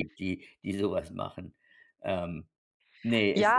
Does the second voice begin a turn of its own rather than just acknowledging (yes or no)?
yes